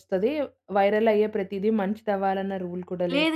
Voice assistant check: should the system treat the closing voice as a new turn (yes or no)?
yes